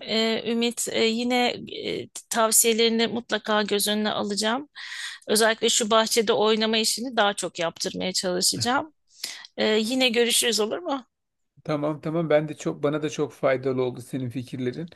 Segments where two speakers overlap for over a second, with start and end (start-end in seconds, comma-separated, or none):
none